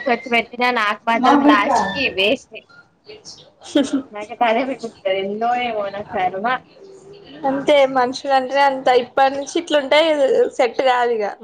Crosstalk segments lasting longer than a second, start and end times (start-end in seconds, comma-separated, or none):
none